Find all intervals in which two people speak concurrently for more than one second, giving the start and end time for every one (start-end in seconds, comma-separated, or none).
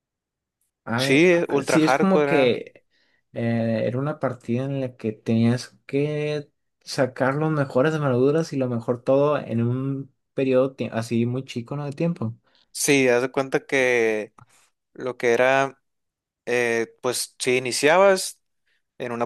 1.0-2.6